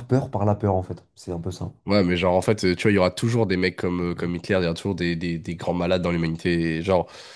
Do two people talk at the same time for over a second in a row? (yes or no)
no